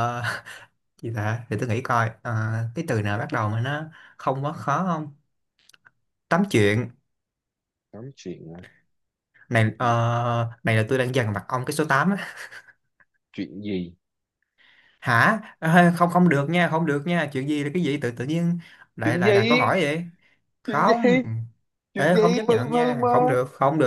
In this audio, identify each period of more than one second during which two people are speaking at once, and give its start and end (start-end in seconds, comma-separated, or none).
21.9-23.4